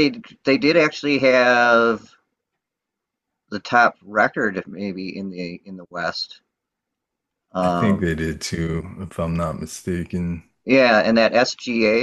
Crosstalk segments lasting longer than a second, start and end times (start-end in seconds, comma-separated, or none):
none